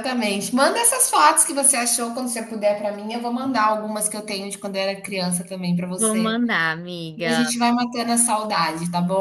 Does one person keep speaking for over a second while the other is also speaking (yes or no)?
no